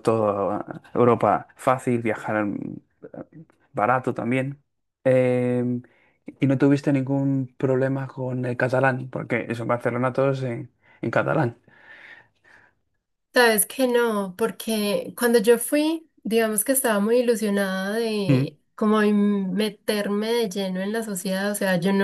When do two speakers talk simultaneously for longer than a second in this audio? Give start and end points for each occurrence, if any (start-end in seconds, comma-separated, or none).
none